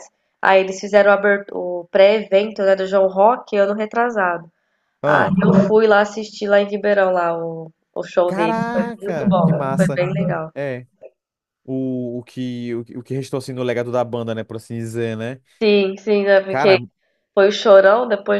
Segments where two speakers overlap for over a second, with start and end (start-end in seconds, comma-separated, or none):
8.3-10.0